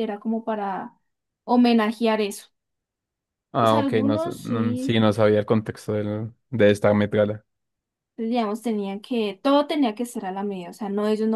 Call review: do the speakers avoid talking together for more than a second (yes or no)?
no